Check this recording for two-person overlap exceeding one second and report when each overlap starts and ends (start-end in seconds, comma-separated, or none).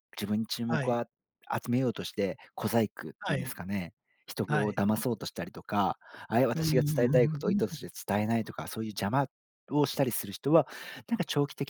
6.5-7.7